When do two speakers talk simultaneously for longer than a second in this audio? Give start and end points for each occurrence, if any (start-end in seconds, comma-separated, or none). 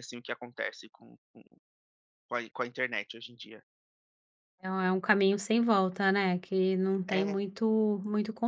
none